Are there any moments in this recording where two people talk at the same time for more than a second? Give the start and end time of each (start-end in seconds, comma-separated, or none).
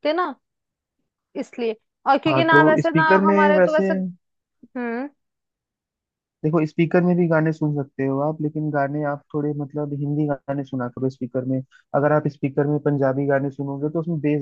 2.3-3.9